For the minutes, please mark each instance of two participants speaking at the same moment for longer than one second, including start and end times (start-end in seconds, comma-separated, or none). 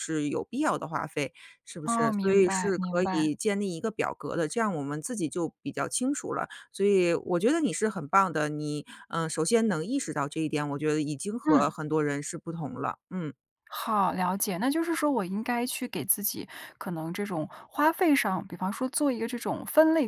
1.8-3.3